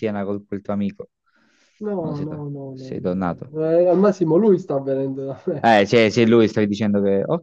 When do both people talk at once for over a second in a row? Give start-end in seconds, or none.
2.0-3.5